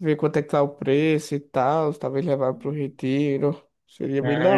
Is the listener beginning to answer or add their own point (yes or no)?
yes